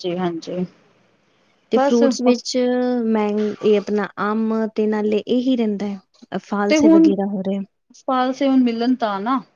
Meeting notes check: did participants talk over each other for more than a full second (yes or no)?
no